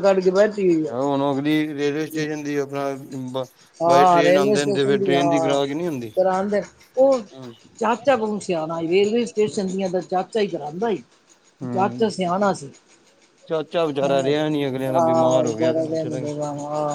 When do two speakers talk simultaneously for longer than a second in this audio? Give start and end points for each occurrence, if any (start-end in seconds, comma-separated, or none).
14.0-16.4